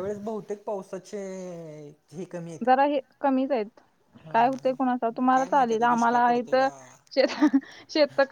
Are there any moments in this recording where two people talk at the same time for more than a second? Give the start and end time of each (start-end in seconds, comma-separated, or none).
5.3-6.7